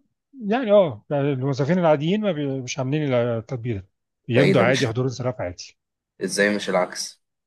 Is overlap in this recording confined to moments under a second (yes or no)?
yes